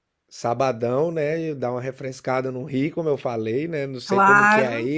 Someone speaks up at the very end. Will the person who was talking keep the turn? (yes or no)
yes